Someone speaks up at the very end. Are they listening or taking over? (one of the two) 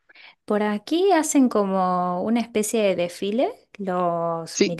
listening